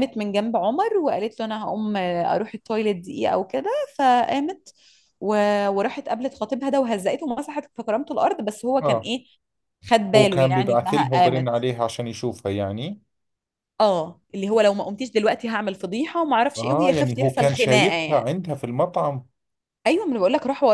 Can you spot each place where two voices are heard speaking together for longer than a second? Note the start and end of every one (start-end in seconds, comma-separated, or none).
10.2-11.5, 16.6-18.2